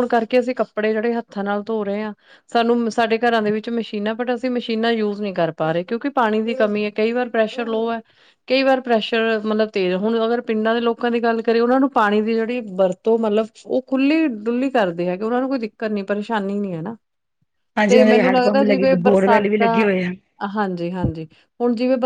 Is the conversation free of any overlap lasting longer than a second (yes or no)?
no